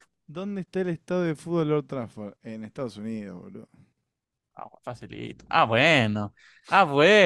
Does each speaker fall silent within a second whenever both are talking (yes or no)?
yes